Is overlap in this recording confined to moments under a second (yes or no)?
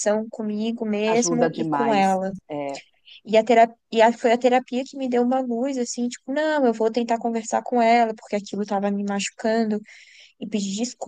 no